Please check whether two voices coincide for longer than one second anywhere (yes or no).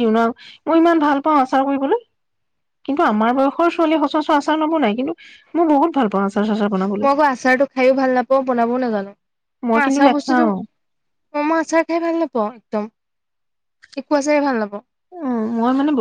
no